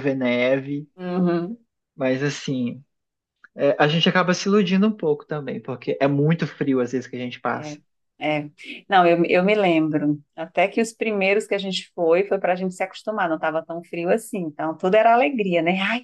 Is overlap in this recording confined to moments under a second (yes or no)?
yes